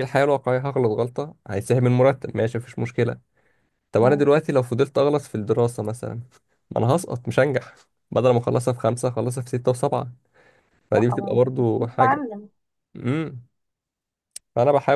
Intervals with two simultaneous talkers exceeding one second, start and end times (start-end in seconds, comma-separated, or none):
10.9-12.2